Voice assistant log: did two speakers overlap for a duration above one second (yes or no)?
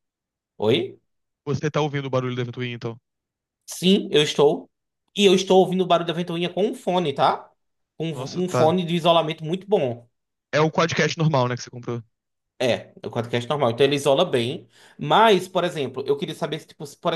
no